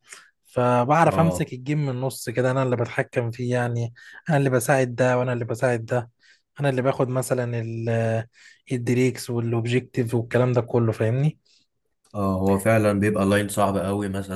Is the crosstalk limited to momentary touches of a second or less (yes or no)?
yes